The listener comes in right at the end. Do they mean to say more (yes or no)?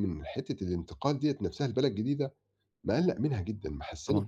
no